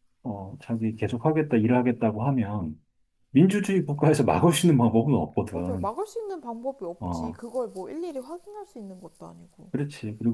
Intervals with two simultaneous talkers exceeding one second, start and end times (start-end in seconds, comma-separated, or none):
none